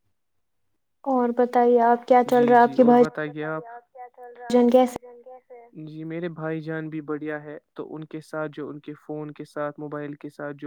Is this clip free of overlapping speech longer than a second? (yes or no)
yes